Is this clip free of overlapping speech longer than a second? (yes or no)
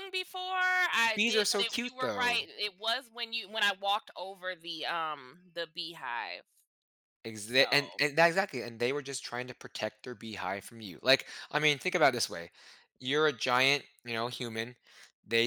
no